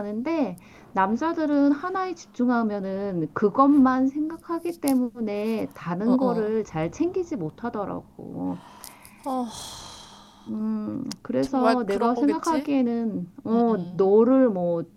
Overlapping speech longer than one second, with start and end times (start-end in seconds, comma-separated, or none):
11.4-12.7